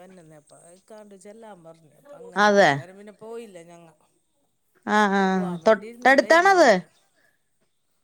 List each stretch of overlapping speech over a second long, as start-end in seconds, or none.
5.2-6.7